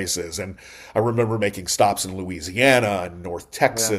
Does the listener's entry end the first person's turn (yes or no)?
no